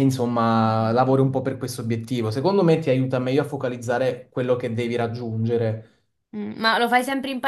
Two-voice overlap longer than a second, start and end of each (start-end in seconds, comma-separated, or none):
none